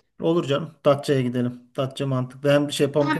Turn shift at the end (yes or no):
yes